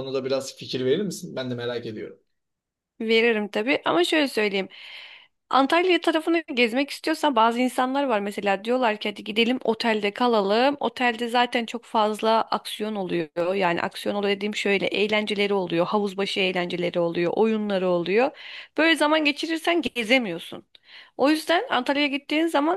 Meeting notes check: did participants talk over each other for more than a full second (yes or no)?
no